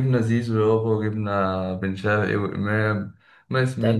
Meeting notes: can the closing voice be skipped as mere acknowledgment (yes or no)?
no